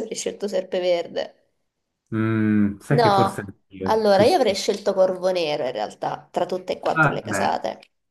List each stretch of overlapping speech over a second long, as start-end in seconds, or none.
2.9-4.6